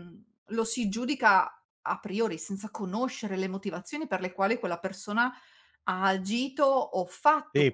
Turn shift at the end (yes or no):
yes